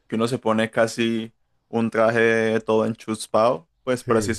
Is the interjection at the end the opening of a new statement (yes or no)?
no